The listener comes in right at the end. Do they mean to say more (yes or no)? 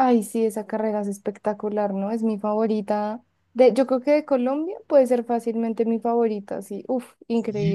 yes